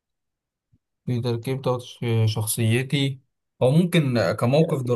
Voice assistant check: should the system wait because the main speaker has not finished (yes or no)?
yes